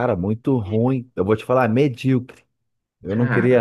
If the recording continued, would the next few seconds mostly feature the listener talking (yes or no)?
no